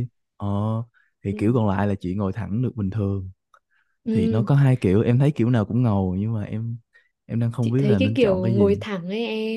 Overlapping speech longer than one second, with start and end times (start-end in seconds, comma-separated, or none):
7.6-8.8